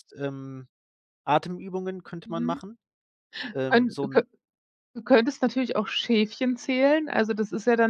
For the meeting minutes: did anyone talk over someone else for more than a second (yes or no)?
no